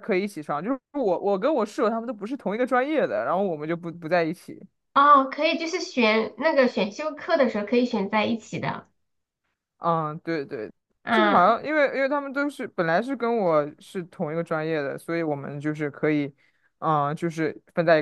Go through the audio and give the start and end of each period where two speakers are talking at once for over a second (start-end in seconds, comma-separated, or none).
none